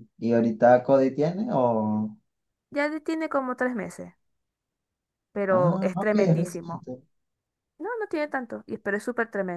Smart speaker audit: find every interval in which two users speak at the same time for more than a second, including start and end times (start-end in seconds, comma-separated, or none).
5.5-6.8